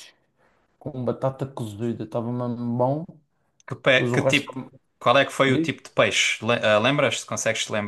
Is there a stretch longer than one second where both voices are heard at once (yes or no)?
no